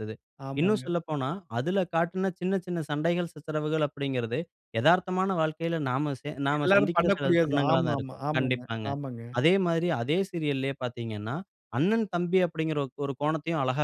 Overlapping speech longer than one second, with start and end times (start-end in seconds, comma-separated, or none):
6.6-8.9